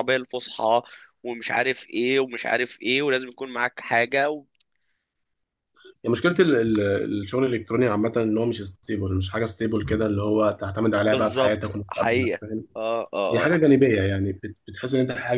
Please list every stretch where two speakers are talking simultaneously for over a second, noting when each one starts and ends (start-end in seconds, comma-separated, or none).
11.1-12.4